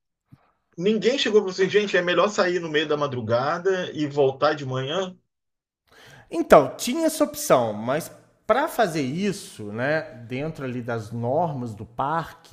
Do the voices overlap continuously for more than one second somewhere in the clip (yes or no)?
no